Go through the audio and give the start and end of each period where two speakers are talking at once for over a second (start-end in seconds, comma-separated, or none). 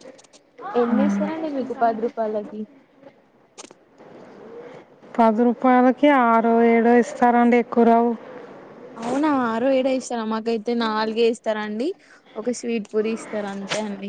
none